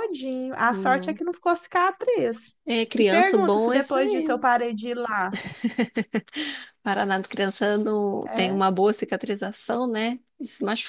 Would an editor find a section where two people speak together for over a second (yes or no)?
yes